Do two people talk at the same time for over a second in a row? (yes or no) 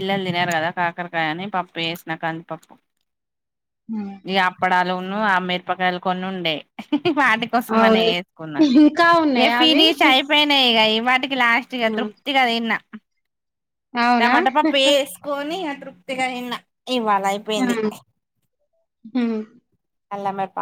no